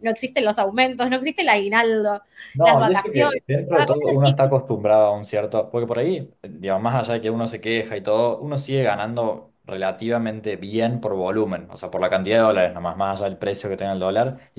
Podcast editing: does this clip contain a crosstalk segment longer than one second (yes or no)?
yes